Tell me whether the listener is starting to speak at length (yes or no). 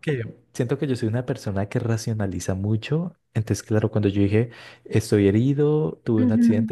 no